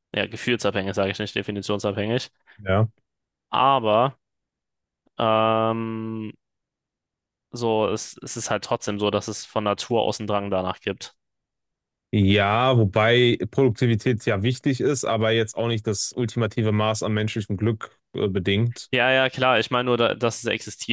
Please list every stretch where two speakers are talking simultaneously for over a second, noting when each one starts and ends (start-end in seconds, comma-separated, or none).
none